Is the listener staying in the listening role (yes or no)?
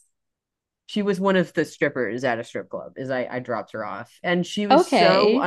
yes